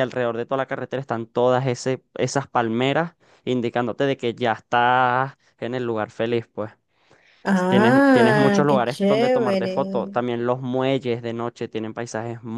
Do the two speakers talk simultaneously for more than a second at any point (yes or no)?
yes